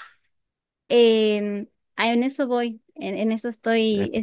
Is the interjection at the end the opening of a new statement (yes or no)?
no